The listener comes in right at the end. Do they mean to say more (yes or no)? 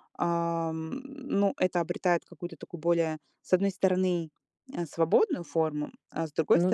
no